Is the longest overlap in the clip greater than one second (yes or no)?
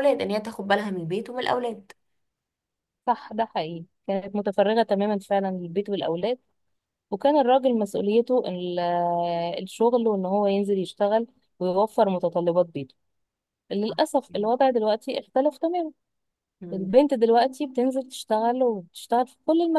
no